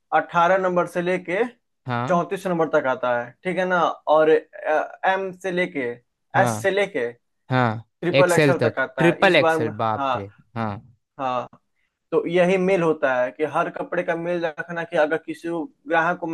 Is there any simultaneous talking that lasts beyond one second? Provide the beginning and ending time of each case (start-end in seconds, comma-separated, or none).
7.8-10.1